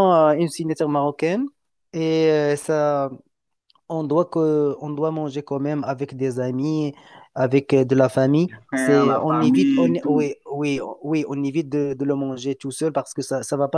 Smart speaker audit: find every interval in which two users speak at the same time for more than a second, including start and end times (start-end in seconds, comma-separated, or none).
8.5-10.3